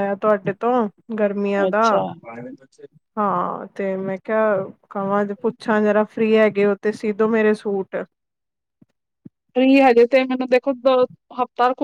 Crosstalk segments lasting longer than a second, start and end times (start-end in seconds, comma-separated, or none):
none